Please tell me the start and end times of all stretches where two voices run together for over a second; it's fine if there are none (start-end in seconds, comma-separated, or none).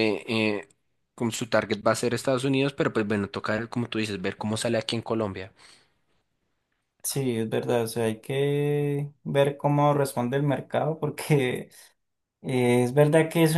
none